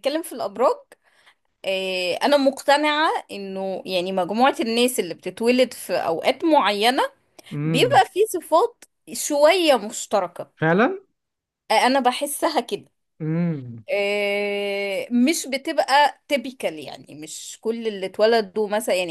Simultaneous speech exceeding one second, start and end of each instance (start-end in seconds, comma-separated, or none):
none